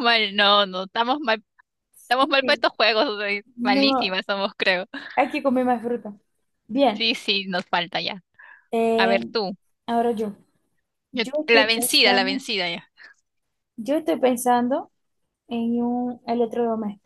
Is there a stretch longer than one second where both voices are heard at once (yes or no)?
yes